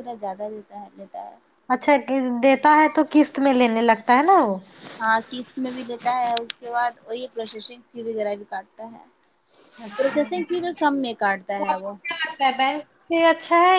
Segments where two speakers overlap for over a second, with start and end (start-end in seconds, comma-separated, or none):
none